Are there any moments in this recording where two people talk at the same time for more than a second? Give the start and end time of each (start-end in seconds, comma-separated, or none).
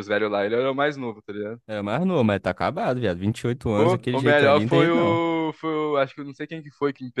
3.8-5.2